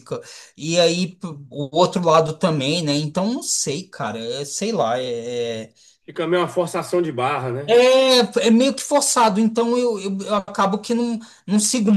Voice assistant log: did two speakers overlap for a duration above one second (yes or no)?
no